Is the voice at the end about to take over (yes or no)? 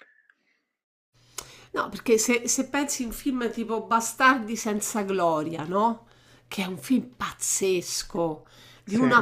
no